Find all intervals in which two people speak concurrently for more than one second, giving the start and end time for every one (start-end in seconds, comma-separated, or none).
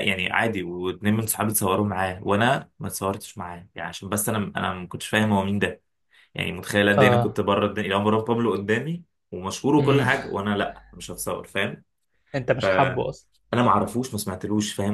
none